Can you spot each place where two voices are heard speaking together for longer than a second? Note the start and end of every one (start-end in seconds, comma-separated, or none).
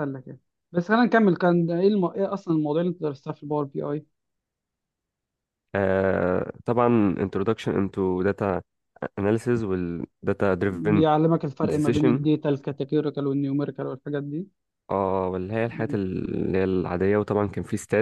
none